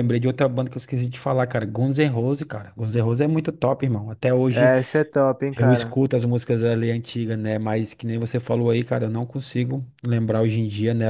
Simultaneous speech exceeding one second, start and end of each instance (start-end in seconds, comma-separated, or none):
none